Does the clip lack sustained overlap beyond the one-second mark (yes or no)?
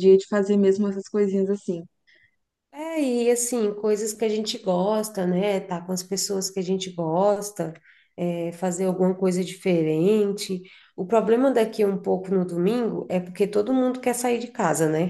yes